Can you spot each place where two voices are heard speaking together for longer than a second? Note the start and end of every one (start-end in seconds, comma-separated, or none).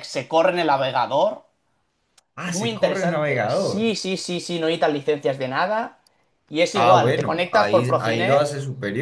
2.5-3.9, 6.7-8.5